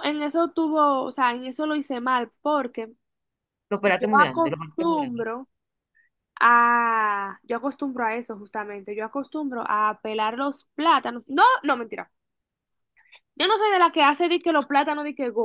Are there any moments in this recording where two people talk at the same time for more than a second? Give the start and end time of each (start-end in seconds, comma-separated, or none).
3.8-5.2